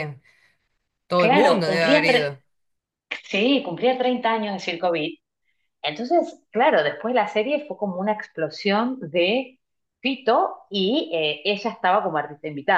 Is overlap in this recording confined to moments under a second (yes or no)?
no